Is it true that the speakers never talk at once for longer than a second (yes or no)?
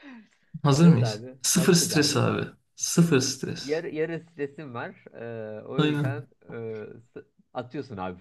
no